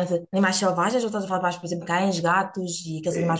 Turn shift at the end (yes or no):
yes